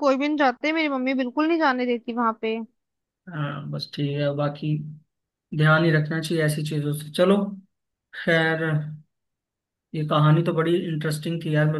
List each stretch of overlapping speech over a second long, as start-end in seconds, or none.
none